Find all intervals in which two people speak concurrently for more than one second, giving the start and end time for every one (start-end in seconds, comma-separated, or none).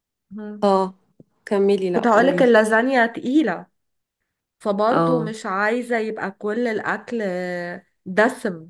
none